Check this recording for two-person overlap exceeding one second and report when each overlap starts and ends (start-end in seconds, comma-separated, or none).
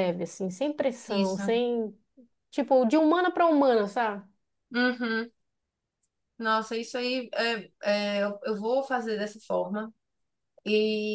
none